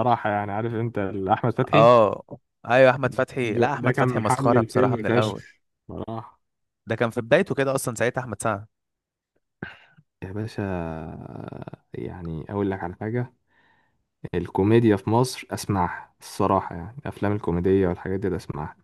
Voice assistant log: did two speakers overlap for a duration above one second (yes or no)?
yes